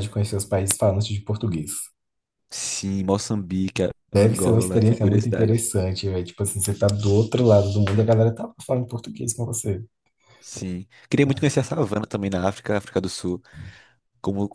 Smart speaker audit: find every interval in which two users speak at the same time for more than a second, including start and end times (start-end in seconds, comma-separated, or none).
4.1-5.6